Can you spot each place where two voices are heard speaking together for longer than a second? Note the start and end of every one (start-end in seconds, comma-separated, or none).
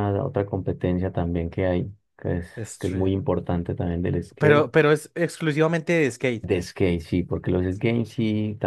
none